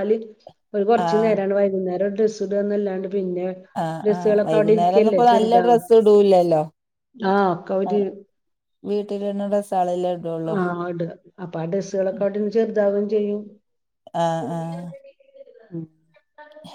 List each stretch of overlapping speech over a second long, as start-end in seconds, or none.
4.0-5.8